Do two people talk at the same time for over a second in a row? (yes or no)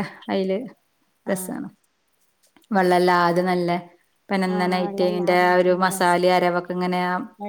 yes